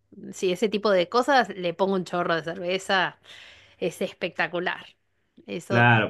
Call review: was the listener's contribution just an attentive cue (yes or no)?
no